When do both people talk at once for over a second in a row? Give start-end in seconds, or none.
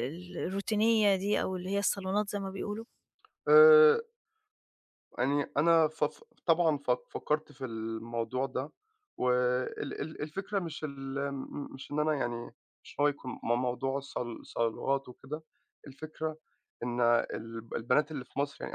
none